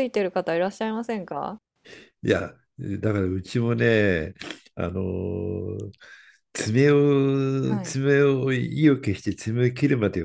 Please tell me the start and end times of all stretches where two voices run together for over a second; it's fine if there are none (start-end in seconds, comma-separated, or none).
none